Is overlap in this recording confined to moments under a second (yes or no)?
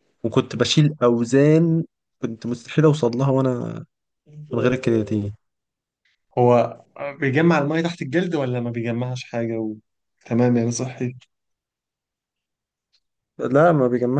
yes